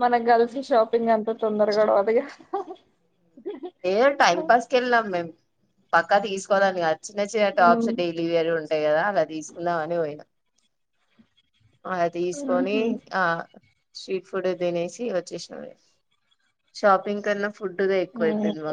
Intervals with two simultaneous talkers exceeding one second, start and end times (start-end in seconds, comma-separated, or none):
none